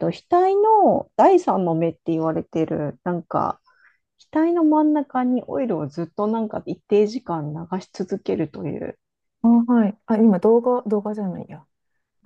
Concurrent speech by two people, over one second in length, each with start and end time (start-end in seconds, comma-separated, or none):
none